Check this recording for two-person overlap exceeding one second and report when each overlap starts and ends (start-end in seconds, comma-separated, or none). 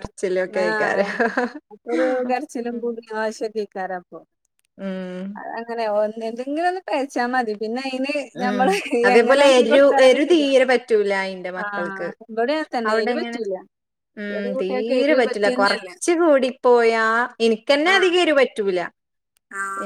14.3-15.9